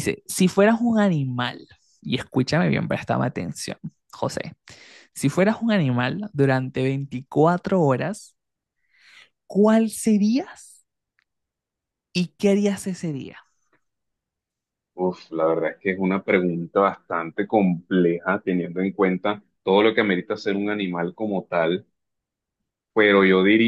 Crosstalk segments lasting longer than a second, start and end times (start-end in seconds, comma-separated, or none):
none